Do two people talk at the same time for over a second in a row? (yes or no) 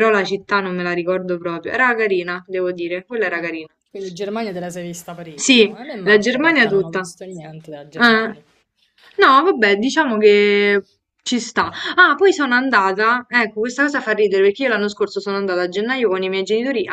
yes